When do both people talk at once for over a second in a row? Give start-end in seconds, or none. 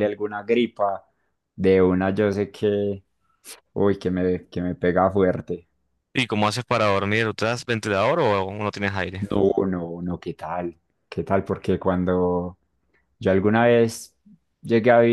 none